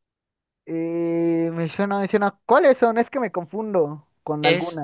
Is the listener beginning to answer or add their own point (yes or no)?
yes